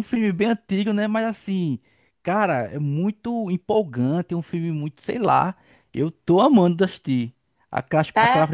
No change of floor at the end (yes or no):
yes